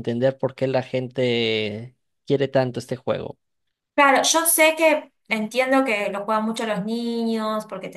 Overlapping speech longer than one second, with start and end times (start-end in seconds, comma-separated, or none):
none